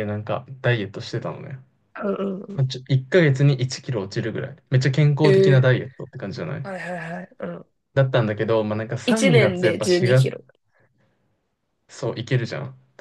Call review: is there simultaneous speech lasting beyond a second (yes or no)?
yes